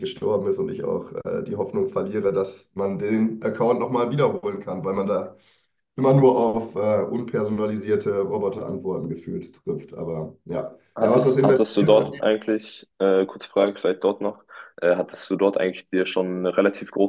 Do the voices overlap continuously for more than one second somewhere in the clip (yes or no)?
yes